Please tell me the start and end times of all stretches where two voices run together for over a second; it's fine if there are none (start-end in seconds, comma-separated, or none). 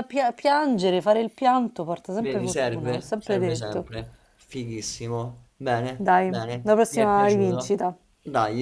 2.2-3.9, 6.0-7.8